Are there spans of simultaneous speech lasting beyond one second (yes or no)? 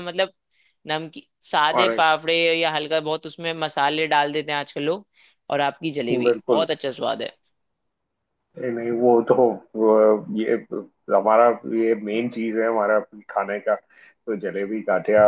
no